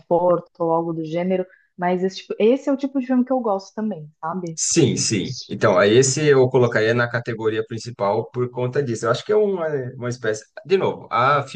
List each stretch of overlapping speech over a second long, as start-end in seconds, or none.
none